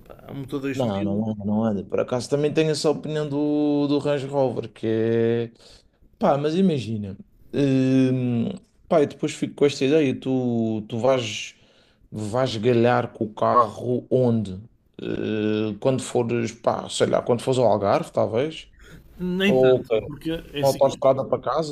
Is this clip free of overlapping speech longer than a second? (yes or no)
yes